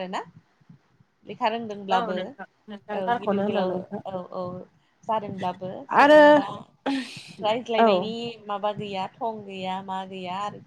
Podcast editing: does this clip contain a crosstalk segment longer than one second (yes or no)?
yes